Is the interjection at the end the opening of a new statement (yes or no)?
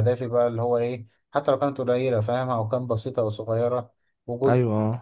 no